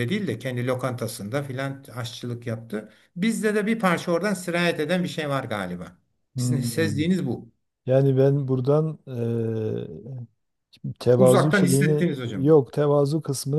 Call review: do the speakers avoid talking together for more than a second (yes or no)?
no